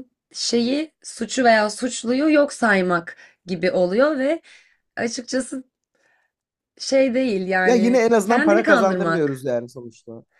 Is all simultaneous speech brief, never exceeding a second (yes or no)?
no